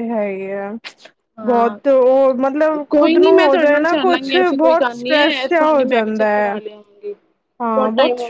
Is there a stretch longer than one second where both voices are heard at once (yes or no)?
yes